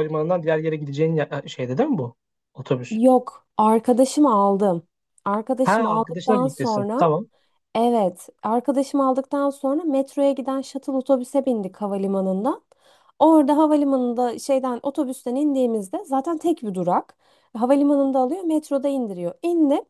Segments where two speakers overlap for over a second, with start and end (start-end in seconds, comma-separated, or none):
5.6-7.1